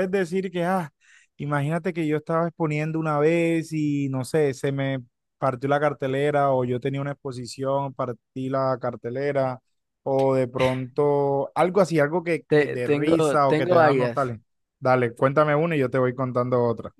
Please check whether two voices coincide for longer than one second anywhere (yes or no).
yes